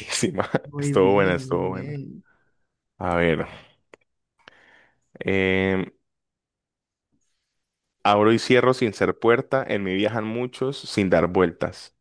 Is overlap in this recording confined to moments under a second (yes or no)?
no